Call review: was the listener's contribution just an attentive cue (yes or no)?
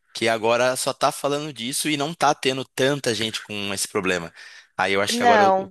yes